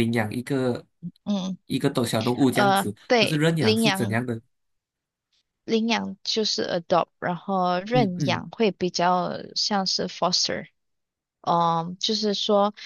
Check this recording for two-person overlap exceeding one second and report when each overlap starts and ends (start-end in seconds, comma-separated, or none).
2.5-4.2